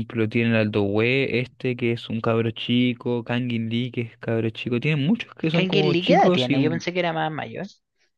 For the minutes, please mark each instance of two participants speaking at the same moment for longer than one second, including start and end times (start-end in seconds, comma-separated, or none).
5.5-6.8